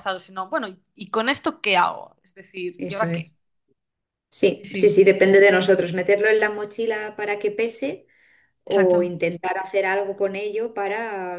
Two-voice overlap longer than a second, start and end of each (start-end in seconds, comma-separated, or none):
none